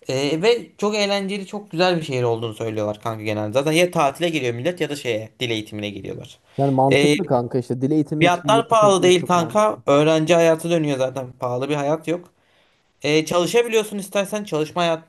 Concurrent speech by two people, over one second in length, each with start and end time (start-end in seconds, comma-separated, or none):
8.2-9.8